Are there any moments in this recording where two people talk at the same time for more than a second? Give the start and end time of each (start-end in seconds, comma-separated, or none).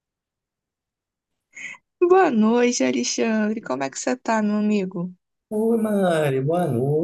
none